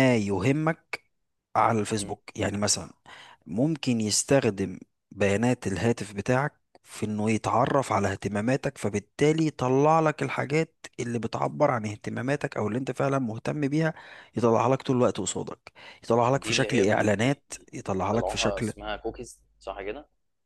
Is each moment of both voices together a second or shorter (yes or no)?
no